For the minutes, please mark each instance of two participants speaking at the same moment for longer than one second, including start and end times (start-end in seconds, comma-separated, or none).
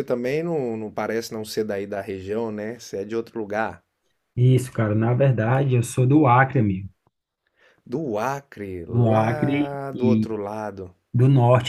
8.9-10.3